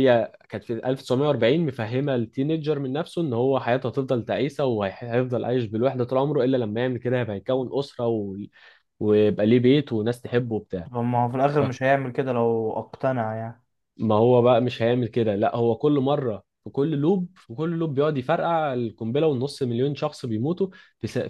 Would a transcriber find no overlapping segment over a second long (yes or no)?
yes